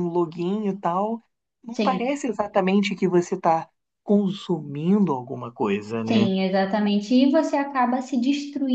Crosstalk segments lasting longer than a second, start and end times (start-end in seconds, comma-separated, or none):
none